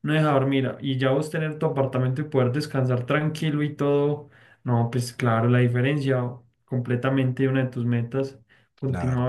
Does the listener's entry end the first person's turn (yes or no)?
yes